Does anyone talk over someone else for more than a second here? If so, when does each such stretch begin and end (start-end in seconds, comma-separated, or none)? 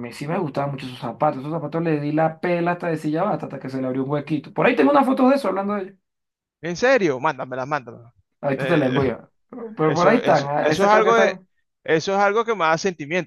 9.8-11.4